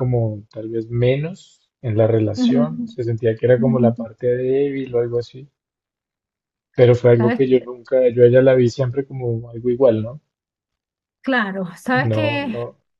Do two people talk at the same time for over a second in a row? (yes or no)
no